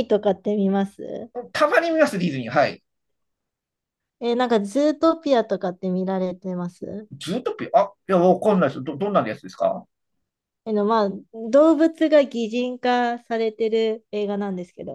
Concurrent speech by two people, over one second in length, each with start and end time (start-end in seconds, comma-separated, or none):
none